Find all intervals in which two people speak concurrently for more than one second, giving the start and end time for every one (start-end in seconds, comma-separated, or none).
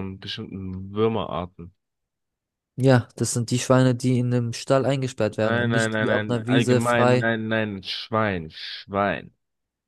5.4-7.3